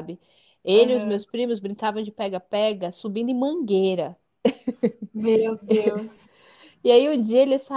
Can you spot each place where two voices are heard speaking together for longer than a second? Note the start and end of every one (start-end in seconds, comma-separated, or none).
none